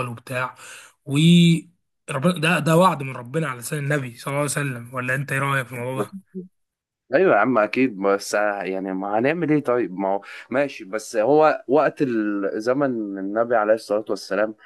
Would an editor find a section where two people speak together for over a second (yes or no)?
no